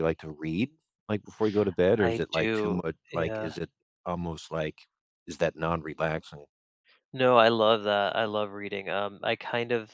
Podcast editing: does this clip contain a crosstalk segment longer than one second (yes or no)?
yes